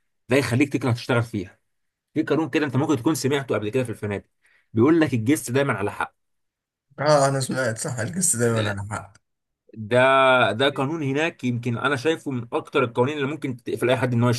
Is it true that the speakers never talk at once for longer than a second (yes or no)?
yes